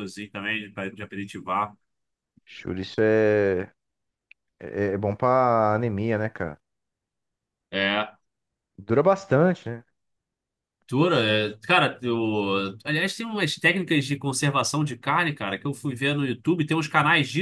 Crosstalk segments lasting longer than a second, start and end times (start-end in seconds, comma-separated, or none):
none